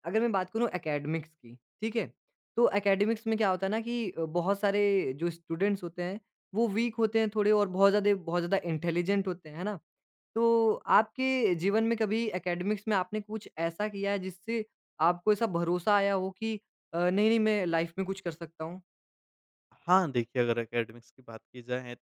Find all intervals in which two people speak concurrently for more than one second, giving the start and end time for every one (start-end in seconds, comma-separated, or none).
none